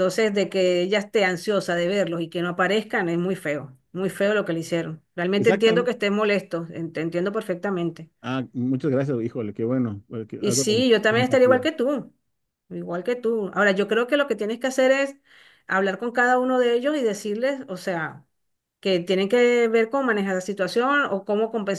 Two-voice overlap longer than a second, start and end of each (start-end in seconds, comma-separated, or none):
10.4-11.7